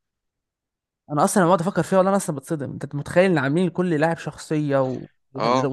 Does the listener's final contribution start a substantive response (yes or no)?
no